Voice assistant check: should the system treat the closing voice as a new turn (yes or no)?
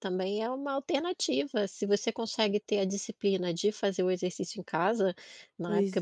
no